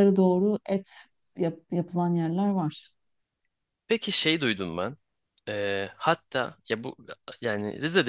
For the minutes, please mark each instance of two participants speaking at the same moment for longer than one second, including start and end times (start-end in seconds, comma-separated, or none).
none